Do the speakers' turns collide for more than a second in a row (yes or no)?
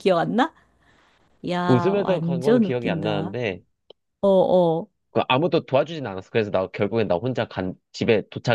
yes